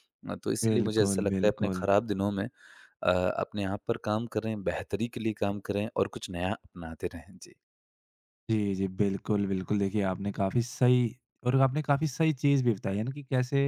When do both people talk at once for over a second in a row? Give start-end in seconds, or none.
0.6-1.9